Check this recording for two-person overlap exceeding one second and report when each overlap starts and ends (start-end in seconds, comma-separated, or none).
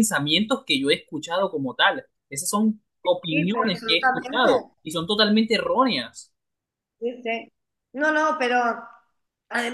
3.3-4.5